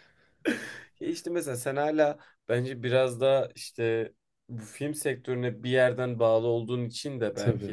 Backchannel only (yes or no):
yes